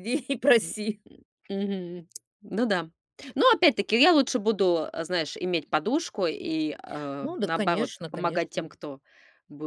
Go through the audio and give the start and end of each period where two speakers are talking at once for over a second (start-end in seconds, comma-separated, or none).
7.2-8.7